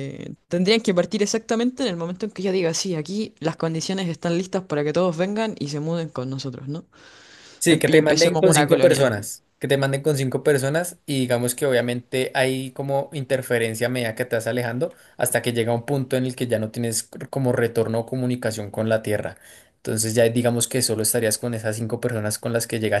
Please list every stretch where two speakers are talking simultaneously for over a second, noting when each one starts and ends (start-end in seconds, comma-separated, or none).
7.7-9.1